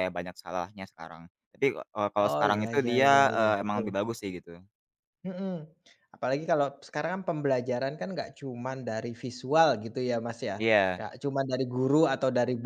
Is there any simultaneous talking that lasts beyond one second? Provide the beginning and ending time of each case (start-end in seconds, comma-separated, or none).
2.2-4.1